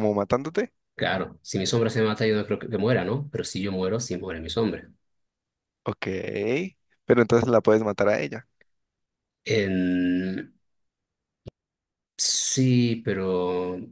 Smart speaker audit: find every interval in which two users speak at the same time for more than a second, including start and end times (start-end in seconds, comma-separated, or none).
none